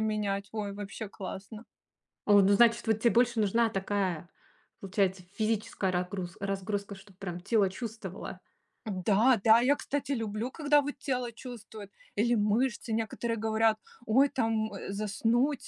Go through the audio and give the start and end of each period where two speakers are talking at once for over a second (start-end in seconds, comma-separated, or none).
none